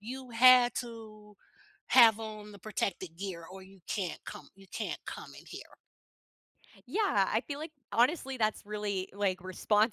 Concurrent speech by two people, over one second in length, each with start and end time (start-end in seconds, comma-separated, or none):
none